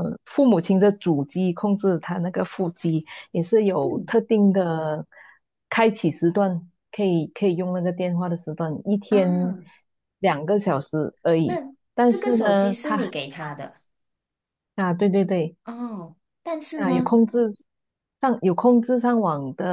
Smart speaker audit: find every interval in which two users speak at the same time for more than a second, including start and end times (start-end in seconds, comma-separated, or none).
11.4-13.1